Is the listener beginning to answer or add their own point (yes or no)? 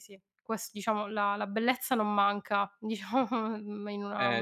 yes